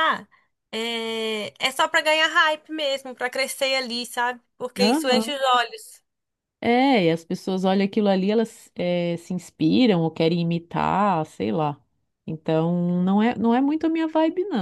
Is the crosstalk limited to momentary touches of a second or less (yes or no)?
yes